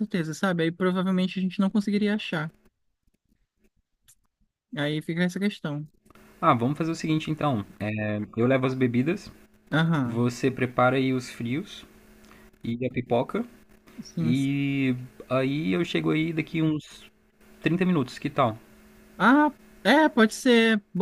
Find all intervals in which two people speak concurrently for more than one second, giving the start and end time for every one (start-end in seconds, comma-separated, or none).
none